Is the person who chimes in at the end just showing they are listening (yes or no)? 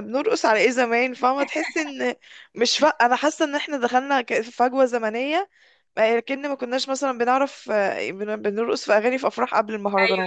no